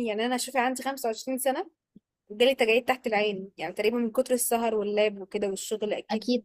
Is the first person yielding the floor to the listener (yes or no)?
no